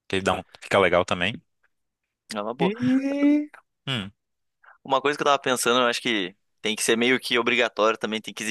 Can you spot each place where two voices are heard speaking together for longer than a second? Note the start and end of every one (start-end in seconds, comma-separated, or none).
none